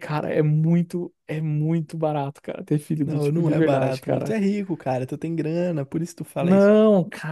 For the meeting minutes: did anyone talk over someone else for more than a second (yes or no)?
yes